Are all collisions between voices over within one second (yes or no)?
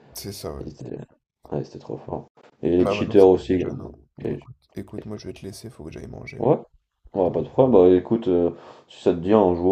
no